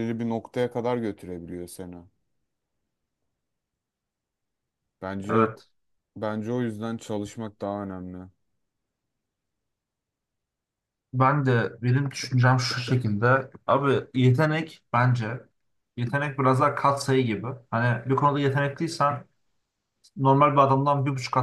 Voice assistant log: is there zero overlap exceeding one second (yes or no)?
yes